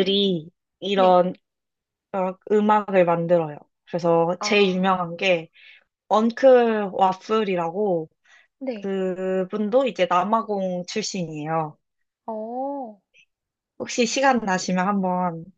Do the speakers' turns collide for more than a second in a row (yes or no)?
no